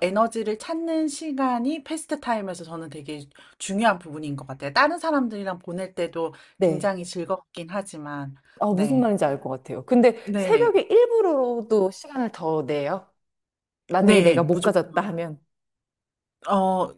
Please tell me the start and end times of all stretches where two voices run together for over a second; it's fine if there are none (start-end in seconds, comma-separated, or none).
none